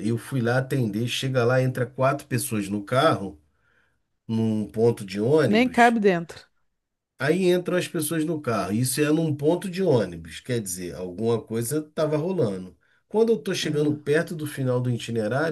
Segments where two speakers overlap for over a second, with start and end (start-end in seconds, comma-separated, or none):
none